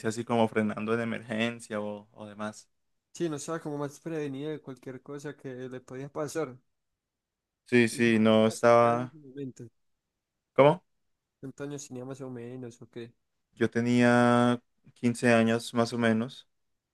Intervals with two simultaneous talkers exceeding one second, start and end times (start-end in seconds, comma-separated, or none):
7.9-9.2